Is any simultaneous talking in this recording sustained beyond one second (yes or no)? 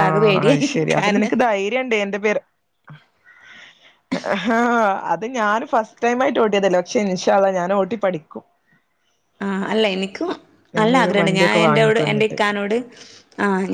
yes